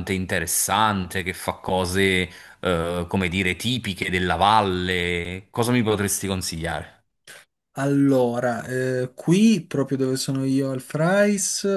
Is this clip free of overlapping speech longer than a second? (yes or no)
yes